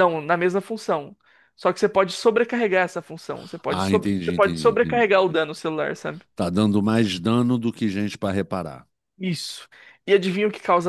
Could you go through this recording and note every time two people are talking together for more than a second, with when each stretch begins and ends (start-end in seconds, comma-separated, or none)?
3.7-5.1